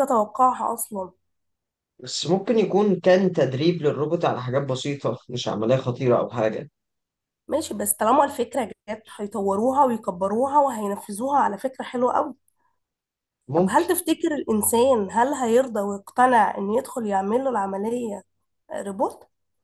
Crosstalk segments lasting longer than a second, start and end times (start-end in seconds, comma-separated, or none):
none